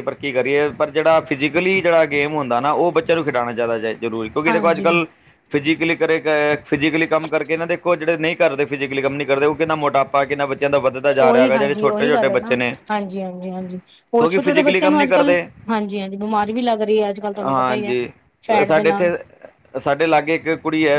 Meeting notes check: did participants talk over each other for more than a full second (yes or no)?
yes